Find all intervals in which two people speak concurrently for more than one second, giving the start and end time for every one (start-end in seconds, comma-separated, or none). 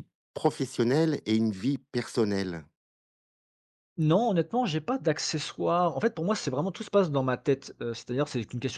none